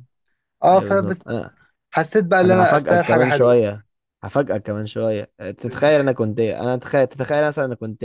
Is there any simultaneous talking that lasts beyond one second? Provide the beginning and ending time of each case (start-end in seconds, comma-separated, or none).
2.4-3.6